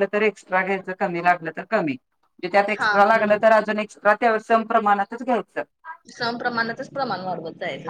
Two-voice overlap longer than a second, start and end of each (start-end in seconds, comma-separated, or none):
none